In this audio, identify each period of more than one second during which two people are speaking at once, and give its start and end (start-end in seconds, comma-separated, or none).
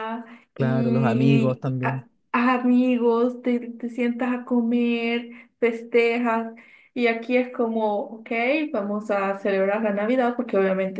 0.5-2.1